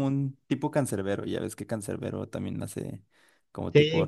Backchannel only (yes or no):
no